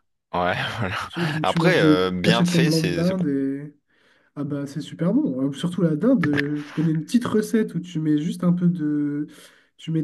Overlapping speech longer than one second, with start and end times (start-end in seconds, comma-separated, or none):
1.4-3.2